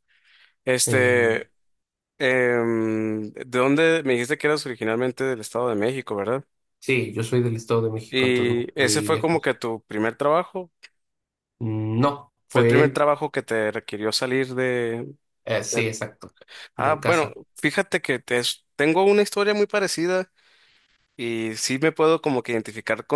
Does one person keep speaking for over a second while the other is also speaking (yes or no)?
yes